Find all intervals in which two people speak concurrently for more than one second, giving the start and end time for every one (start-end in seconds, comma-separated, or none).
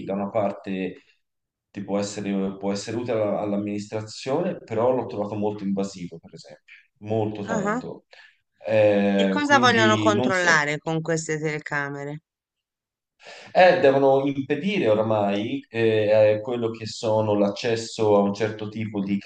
9.1-10.6